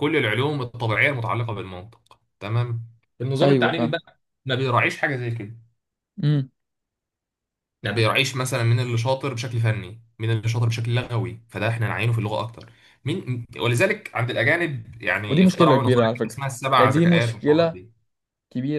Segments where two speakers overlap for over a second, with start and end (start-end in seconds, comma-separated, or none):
15.3-17.8